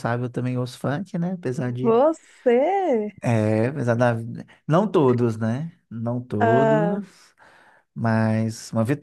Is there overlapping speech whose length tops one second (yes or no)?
no